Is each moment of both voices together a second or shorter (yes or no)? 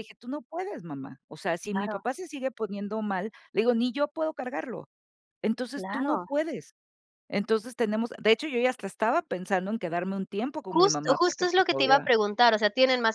no